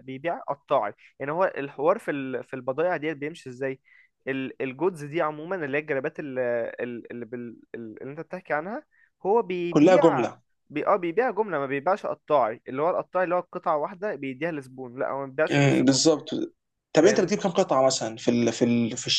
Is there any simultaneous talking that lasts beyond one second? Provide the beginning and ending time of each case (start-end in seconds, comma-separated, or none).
none